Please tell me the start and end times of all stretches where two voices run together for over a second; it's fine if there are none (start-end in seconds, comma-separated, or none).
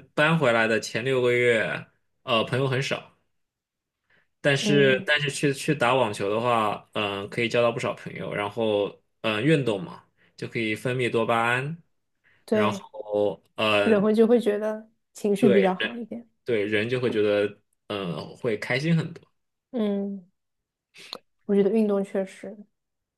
none